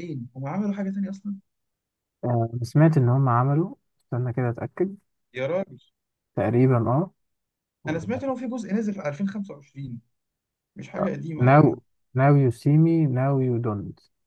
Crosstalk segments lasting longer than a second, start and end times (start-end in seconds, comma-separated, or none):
none